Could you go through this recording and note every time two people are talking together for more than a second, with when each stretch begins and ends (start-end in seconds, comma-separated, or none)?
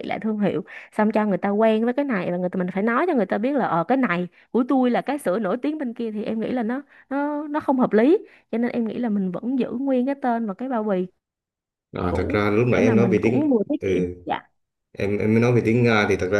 12.1-14.2